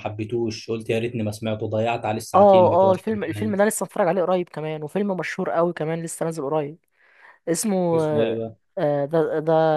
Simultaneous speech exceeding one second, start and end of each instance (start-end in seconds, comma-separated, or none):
2.4-3.6